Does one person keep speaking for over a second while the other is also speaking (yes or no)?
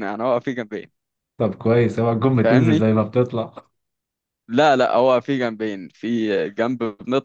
no